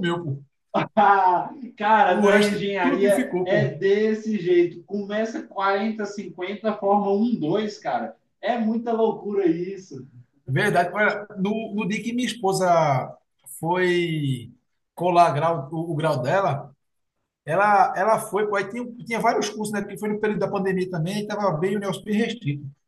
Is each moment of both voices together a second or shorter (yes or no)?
no